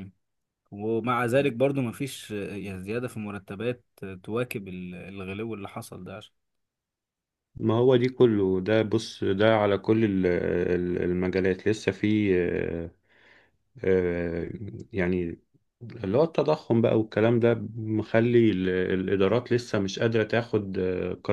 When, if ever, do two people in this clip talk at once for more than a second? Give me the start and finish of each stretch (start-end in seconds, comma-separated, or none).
none